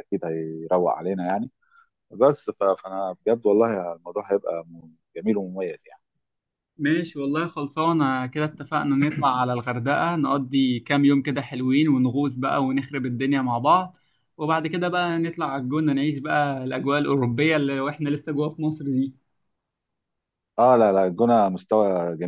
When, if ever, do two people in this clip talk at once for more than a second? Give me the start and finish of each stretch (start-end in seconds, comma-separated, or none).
none